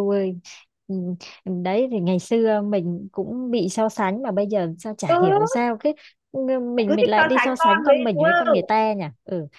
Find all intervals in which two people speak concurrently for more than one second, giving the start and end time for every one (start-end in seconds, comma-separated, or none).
6.9-8.7